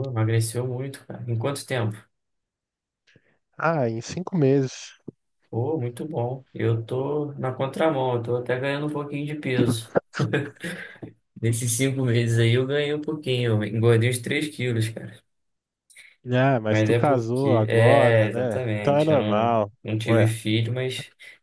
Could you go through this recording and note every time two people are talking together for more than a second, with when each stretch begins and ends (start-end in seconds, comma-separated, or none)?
16.7-20.3